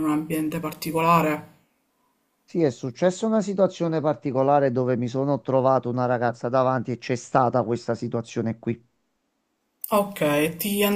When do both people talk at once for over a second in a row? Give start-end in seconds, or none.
none